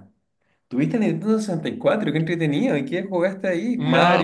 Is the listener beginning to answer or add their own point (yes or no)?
yes